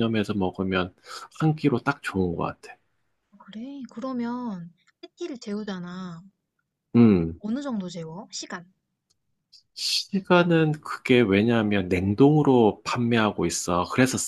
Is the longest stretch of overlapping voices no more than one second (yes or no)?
yes